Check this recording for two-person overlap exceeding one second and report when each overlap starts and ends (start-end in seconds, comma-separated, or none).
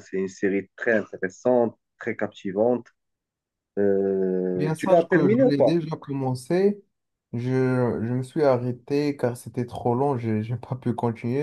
4.6-5.8